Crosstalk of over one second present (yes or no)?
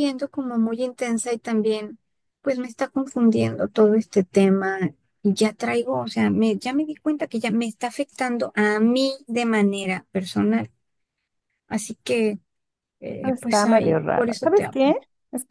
yes